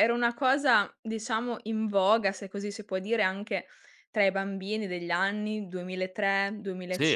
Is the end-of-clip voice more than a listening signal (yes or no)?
yes